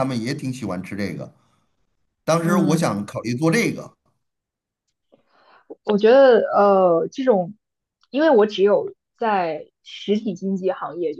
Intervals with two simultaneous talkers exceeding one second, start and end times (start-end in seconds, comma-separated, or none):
none